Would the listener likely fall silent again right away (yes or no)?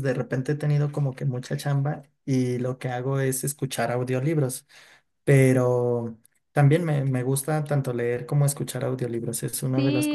no